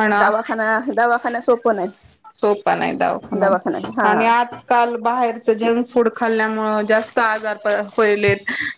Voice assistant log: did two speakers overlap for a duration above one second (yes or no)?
no